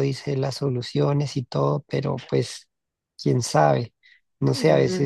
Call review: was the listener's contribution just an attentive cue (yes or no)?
yes